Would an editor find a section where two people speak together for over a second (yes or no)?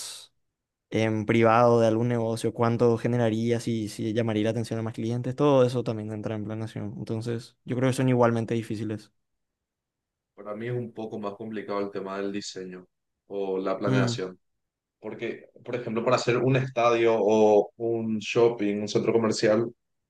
no